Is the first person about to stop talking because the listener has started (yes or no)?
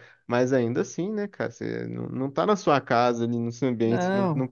no